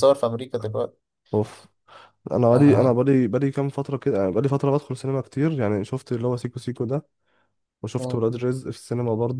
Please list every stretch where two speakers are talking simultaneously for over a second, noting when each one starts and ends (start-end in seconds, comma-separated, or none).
none